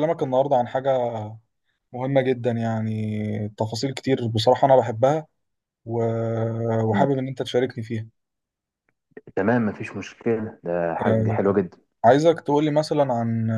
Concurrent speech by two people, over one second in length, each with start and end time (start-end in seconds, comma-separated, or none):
none